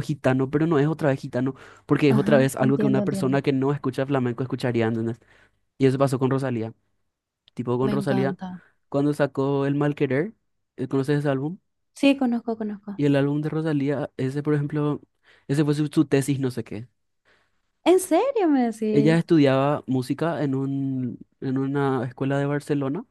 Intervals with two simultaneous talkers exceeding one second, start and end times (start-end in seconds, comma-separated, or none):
2.1-3.4